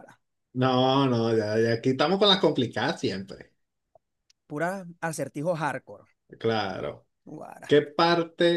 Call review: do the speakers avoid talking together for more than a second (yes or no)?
yes